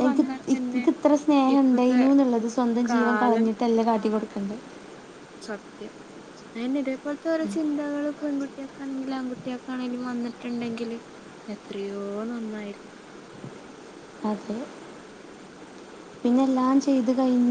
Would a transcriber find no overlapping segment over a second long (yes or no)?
yes